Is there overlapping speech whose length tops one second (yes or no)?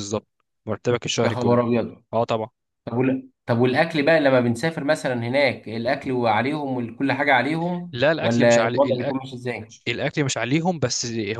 yes